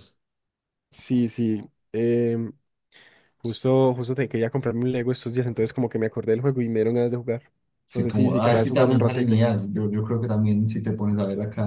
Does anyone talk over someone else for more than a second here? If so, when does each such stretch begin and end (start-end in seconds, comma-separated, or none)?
7.9-9.4